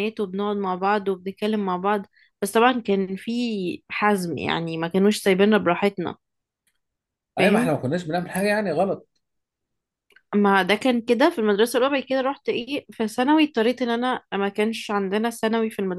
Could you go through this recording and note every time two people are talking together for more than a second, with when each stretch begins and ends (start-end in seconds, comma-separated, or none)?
none